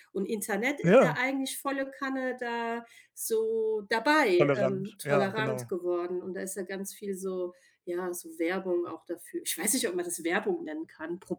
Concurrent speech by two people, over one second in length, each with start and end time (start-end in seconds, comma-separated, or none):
4.4-5.7